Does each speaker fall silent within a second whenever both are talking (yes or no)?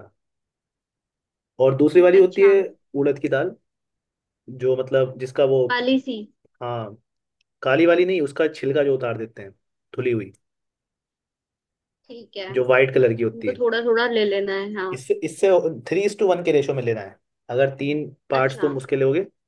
yes